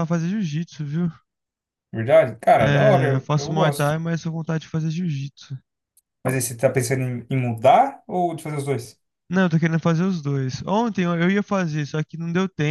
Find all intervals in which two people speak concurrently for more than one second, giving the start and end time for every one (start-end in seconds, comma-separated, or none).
2.5-4.0